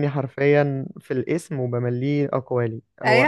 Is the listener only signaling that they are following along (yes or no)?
no